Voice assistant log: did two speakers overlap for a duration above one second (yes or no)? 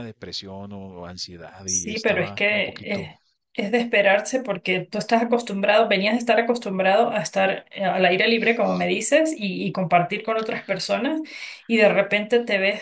yes